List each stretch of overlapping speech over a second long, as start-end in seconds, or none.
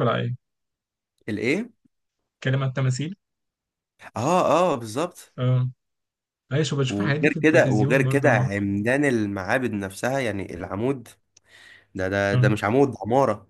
6.9-8.5